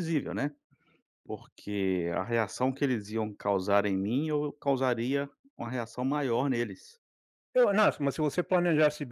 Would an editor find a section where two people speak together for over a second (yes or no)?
no